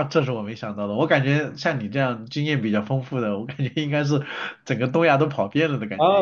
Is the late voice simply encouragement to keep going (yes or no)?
no